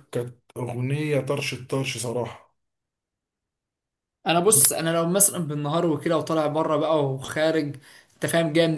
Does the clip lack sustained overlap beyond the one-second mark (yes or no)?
yes